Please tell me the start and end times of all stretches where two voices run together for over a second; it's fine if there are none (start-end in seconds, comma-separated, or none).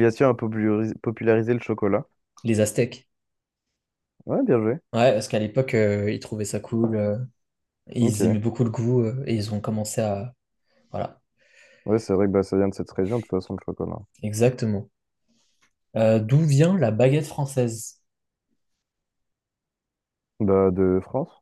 none